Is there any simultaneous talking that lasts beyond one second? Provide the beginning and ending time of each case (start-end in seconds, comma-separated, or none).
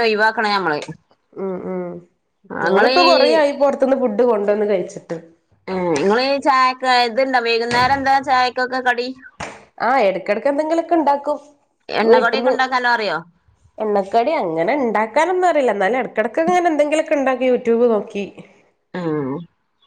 none